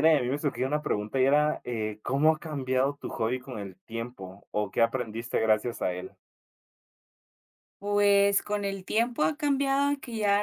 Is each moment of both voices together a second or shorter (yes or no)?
yes